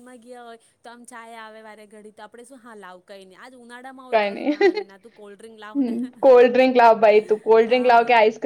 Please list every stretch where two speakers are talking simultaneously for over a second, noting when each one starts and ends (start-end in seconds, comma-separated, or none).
4.1-5.9